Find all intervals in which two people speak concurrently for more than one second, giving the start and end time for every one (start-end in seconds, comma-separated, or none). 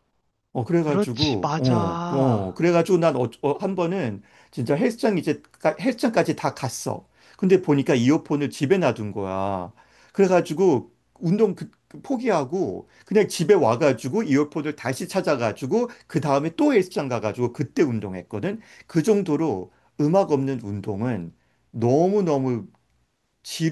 0.9-2.6